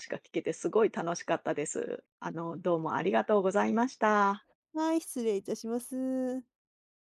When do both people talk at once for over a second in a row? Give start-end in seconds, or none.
none